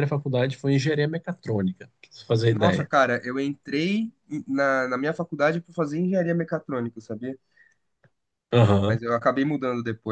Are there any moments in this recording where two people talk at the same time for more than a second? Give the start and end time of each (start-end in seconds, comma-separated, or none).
none